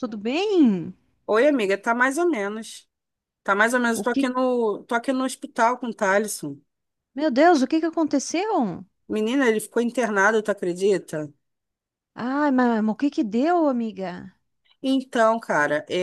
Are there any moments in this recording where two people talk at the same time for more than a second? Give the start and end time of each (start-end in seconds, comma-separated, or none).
none